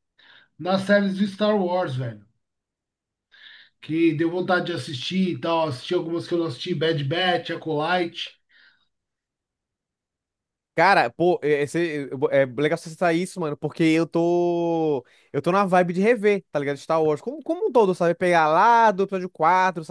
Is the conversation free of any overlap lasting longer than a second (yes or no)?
yes